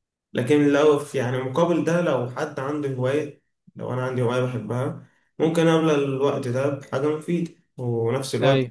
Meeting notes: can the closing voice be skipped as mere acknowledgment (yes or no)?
yes